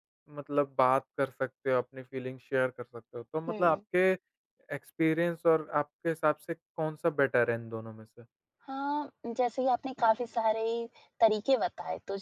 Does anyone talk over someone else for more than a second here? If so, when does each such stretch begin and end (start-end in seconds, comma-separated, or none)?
none